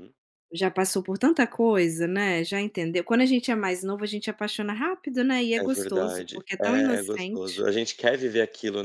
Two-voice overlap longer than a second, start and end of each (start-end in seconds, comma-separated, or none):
5.6-7.7